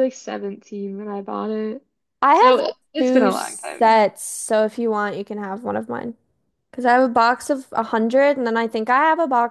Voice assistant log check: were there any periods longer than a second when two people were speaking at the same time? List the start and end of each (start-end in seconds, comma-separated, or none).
2.3-4.0